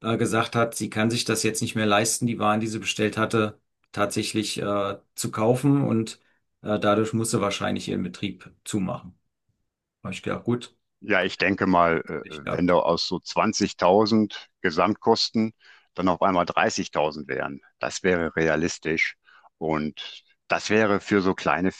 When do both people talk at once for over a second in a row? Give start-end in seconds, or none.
none